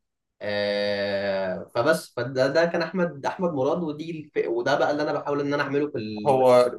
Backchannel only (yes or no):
no